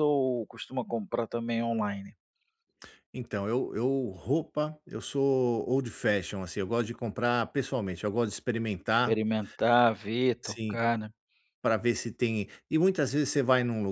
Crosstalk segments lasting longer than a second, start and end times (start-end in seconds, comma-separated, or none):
none